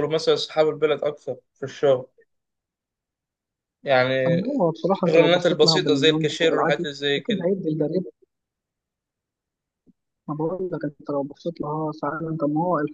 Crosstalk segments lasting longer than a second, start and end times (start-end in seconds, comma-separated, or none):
4.9-7.5